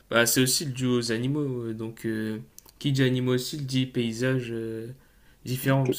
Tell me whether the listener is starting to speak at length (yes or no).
no